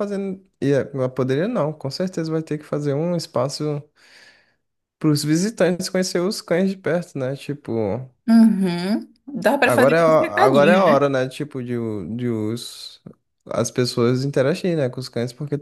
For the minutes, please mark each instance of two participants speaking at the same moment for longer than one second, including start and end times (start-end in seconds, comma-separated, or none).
9.6-11.0